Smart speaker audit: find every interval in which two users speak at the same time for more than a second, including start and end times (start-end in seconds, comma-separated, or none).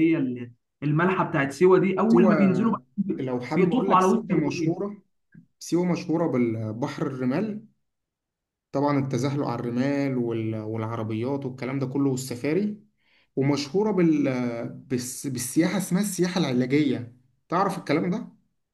3.5-4.9